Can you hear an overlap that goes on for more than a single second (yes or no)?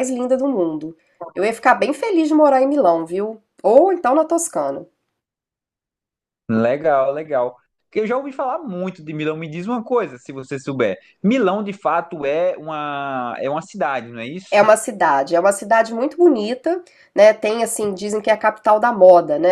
no